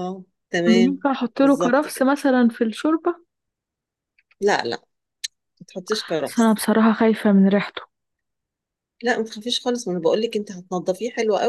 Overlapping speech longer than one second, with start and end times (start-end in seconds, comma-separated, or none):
0.7-2.0